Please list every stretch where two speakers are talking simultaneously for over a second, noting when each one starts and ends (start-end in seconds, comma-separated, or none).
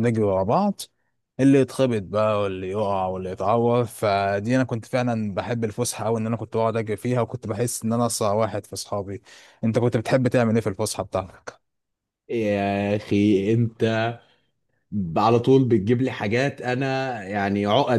none